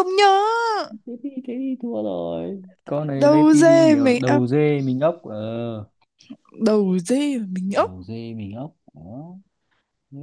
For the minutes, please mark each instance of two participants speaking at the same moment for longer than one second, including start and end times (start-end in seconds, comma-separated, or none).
3.1-4.4